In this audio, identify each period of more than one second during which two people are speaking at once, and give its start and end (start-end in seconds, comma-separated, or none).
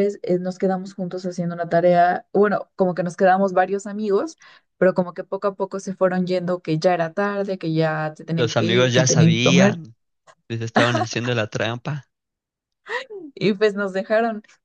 8.4-9.7